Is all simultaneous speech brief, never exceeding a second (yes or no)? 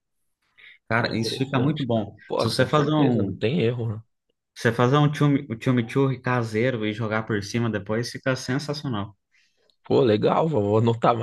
no